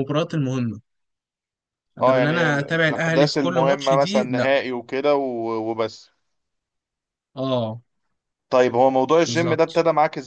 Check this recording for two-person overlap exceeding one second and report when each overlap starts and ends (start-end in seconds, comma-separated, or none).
2.0-4.5